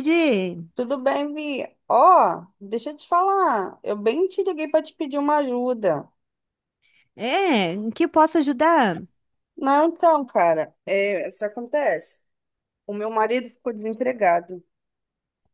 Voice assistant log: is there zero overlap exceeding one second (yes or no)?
yes